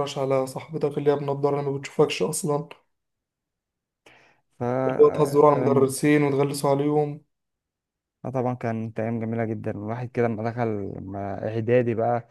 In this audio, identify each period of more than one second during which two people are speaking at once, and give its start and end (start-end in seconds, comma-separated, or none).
none